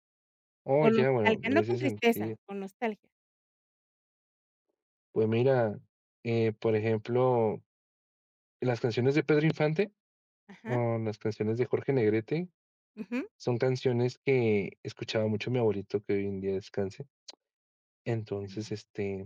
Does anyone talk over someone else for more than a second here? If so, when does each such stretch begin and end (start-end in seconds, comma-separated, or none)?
0.8-2.4